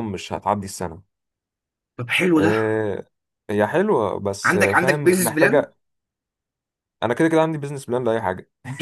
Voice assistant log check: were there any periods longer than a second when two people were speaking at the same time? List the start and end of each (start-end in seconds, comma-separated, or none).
4.4-5.7